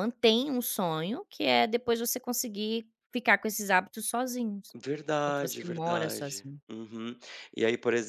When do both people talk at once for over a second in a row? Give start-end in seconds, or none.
5.2-6.6